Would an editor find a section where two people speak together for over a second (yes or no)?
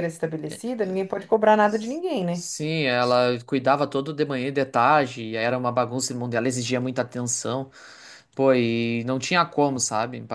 no